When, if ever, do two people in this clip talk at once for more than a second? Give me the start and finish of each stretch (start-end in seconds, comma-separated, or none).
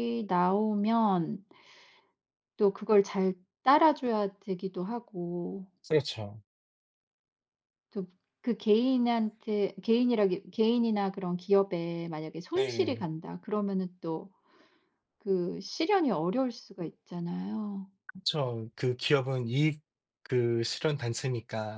none